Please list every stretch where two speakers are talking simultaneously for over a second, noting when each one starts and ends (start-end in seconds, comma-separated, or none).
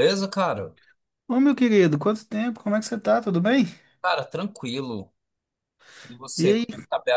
none